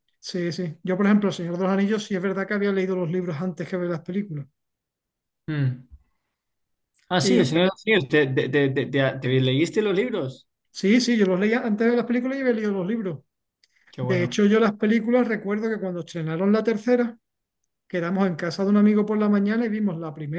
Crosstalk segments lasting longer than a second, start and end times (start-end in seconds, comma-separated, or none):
none